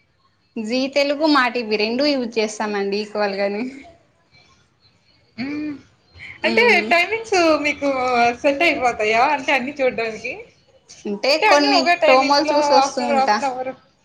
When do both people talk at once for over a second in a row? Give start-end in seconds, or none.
11.4-13.4